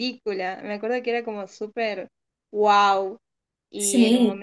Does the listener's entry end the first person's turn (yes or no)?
yes